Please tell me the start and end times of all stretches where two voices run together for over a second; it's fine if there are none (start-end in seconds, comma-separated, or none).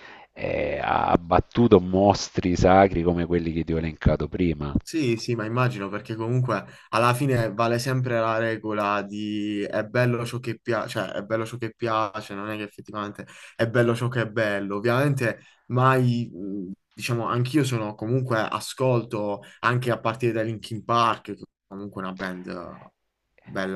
none